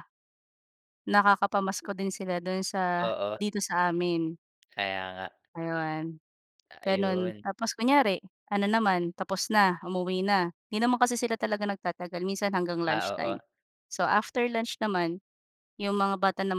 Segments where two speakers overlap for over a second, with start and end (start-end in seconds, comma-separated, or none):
none